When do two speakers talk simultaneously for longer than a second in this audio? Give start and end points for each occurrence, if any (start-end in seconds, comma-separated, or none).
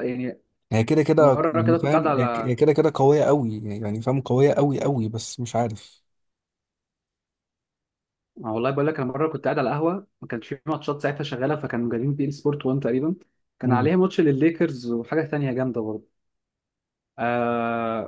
1.2-2.6